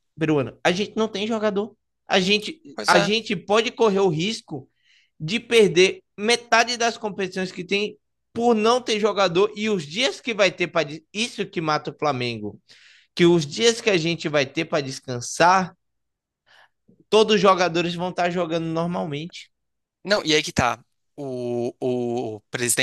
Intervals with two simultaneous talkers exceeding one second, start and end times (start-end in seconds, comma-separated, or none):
none